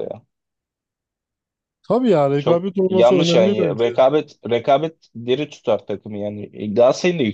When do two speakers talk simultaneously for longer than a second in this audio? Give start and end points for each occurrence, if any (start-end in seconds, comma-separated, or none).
2.4-3.9